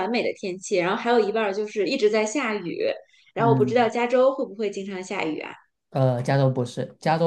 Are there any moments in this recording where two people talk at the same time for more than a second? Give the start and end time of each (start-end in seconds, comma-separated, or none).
none